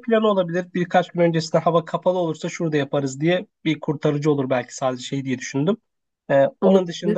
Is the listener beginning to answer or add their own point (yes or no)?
no